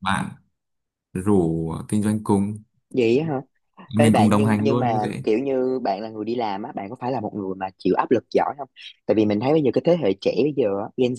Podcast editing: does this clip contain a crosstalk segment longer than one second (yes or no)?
yes